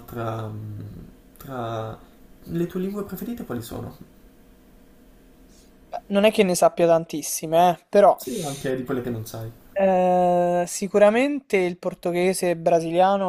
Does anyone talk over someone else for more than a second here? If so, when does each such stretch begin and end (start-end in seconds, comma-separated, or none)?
none